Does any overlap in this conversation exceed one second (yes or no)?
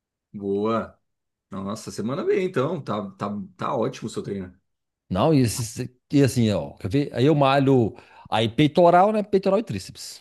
no